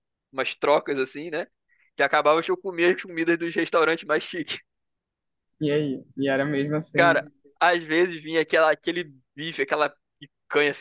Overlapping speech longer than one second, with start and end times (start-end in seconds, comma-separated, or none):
none